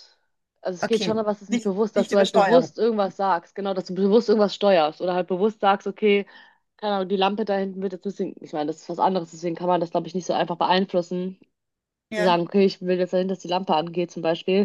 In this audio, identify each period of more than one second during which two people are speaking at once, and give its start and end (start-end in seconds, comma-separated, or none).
0.8-2.8